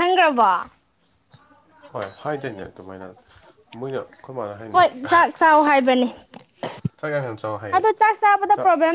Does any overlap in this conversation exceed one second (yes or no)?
no